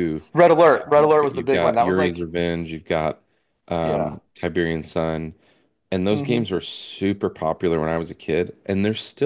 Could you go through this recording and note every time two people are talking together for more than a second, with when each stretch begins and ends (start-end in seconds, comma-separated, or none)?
1.0-2.3